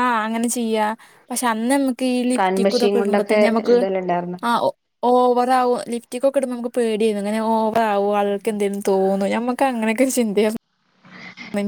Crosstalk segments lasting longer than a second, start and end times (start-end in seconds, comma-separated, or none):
2.4-3.8